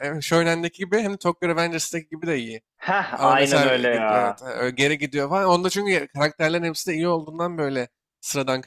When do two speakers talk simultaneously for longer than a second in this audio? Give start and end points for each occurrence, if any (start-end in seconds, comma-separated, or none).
3.1-4.4